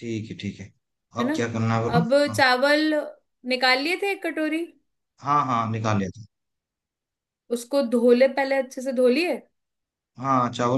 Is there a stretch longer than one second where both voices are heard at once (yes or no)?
no